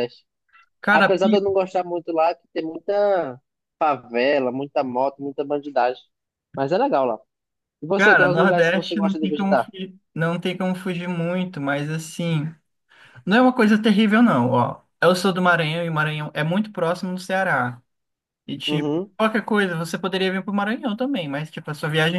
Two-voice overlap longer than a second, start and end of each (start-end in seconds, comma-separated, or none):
8.0-9.7